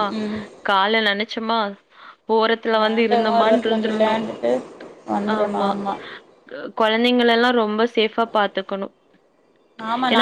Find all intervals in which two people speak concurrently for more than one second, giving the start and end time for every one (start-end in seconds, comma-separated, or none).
2.7-4.2